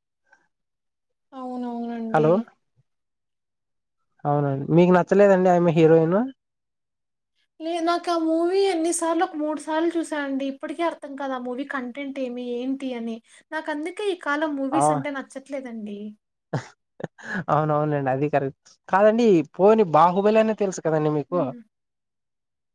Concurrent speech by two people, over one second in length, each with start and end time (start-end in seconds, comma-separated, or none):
none